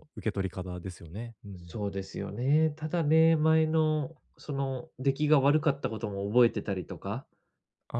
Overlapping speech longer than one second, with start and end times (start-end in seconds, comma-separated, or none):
none